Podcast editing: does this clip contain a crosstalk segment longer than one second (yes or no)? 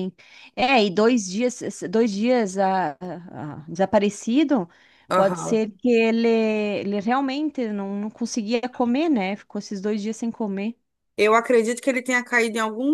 no